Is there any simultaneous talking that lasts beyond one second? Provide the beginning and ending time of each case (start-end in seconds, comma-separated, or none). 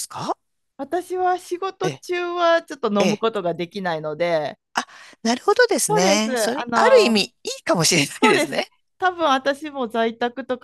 5.9-7.3